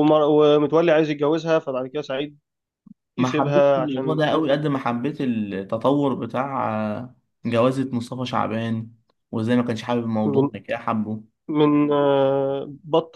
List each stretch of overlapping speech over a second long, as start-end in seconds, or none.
3.2-4.5